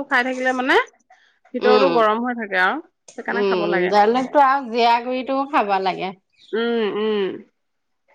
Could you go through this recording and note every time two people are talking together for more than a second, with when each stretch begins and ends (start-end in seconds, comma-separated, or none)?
none